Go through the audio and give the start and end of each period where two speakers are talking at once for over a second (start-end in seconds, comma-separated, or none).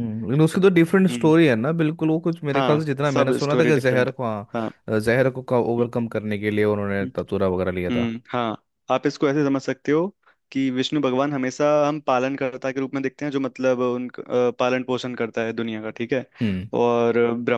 2.5-4.7